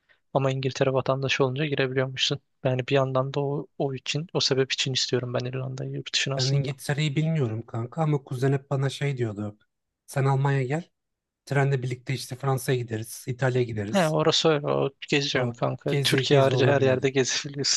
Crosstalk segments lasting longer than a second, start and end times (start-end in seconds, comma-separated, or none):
15.3-17.1